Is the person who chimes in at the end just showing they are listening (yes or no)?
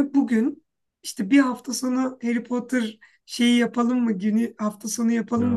yes